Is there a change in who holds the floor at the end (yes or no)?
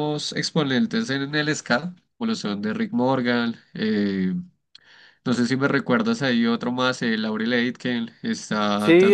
yes